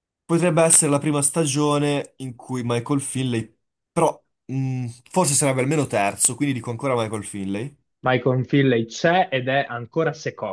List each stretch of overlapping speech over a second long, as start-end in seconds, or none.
none